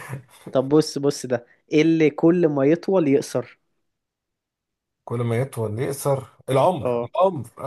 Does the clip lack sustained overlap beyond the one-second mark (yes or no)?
yes